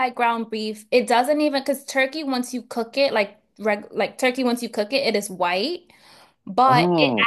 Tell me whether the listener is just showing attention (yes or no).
yes